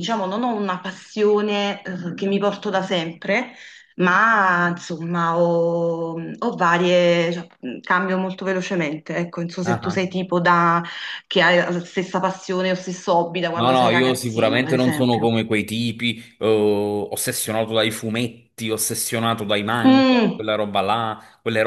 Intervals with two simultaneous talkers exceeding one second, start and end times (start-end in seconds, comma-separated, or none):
13.5-15.3